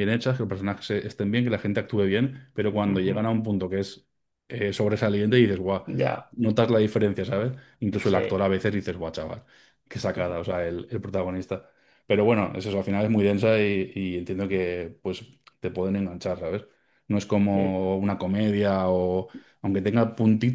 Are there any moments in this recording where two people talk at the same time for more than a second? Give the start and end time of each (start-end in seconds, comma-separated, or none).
none